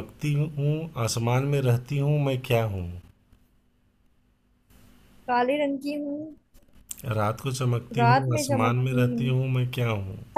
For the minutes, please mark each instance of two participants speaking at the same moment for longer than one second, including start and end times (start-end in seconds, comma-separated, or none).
8.0-9.2